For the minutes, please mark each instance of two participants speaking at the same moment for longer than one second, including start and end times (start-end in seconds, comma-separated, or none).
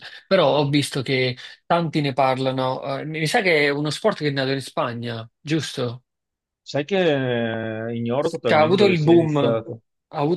8.2-9.6